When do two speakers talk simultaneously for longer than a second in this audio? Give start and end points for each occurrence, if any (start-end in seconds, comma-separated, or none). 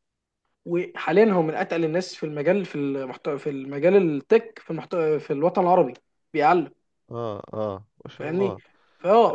none